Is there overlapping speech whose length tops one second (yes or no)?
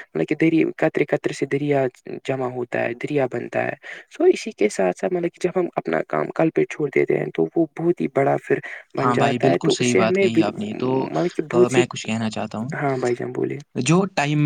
yes